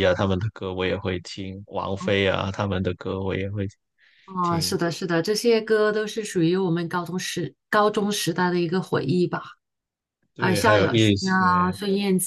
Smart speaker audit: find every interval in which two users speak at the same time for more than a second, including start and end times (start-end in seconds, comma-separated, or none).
10.4-11.8